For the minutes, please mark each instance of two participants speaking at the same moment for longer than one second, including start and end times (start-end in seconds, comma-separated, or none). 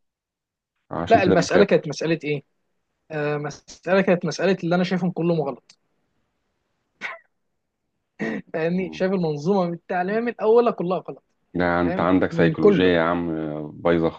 11.5-12.9